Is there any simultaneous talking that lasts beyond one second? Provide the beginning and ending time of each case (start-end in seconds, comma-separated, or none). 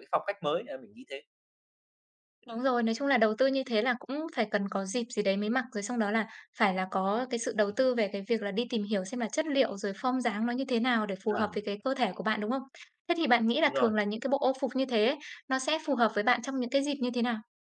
none